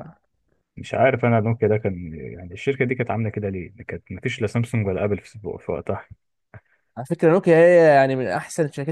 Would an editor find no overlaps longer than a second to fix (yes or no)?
yes